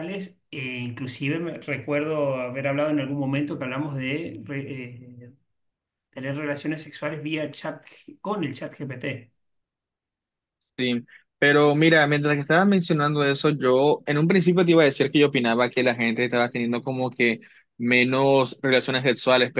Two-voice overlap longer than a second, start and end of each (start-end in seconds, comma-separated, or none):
none